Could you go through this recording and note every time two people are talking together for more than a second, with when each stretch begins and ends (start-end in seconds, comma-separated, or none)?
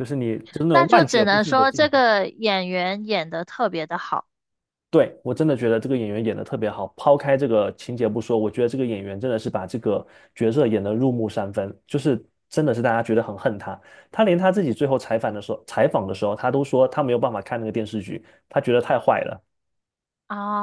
0.7-2.0